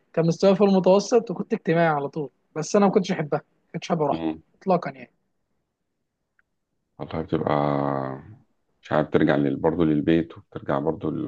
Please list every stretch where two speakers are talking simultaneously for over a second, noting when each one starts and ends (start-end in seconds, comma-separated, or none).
none